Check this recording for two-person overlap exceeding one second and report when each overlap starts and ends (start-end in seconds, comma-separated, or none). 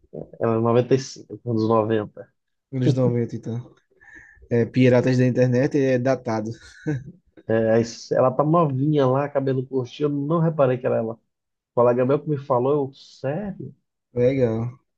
none